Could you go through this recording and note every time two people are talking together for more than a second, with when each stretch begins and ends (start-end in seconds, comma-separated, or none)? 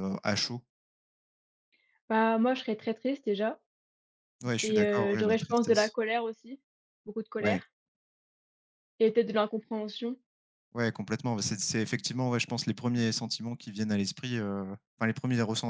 4.6-5.9